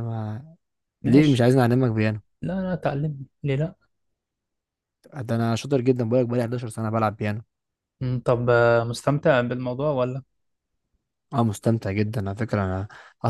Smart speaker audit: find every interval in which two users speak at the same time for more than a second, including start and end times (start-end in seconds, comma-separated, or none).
none